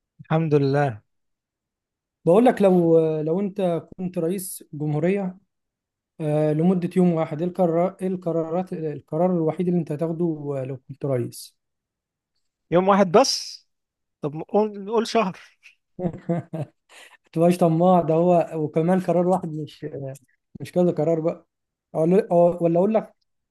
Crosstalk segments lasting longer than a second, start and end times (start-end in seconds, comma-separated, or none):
none